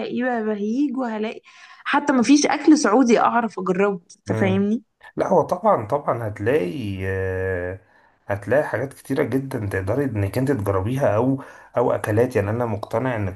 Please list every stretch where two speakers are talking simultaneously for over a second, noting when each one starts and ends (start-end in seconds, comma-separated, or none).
none